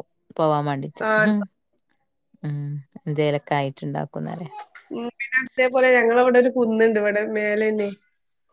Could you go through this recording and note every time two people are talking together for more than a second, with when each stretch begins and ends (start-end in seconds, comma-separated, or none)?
none